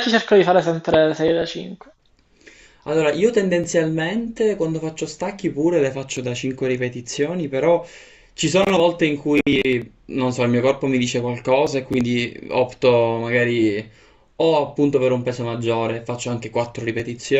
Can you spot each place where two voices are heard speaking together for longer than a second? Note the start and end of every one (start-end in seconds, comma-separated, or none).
none